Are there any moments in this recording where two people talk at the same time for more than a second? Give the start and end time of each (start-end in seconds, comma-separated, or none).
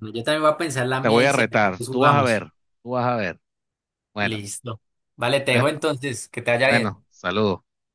1.0-2.4